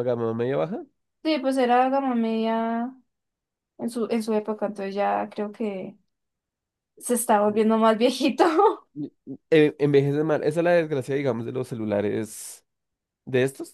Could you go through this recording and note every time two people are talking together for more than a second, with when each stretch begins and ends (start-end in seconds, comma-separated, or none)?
none